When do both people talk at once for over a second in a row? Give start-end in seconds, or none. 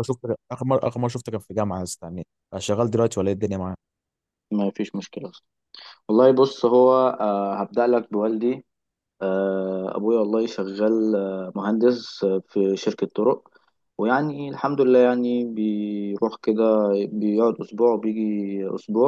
none